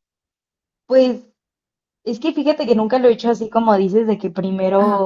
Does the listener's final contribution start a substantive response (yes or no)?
no